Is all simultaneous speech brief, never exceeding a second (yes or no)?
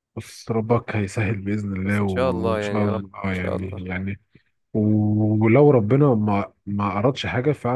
no